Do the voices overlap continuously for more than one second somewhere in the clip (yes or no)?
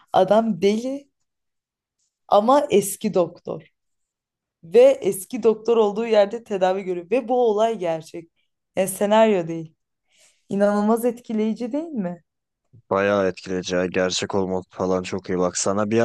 no